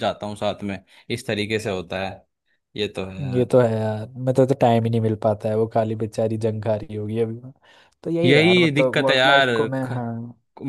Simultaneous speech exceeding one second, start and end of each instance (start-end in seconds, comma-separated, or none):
8.2-9.9